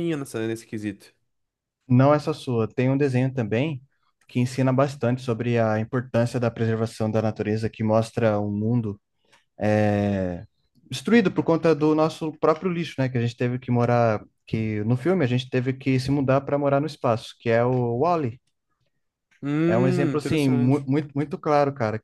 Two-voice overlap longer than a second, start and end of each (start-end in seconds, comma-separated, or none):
19.7-20.9